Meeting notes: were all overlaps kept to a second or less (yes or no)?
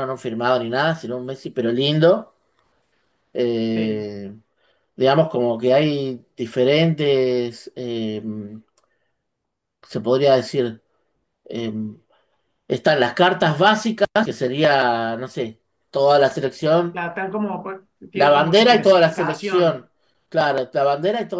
no